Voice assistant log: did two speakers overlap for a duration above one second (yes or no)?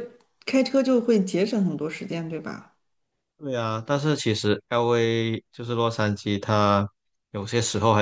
no